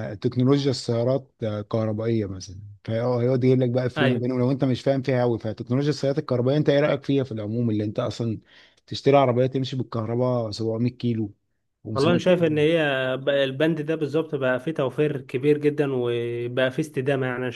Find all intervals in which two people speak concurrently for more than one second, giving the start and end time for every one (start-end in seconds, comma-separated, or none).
none